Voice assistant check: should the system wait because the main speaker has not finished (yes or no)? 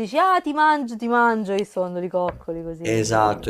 no